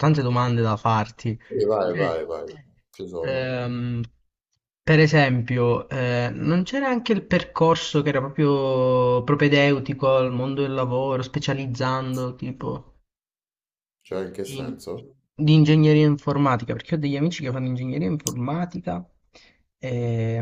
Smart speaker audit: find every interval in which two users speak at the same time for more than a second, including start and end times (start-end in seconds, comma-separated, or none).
none